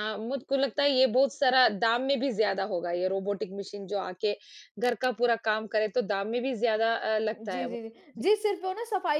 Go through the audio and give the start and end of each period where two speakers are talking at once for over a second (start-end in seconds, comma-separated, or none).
none